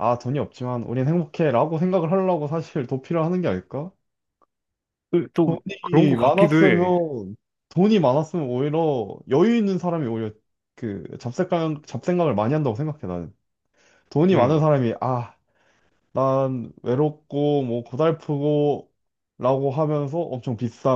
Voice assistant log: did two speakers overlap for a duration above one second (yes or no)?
yes